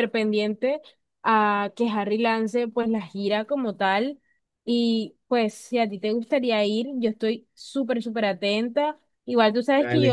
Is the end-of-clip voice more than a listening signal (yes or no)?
no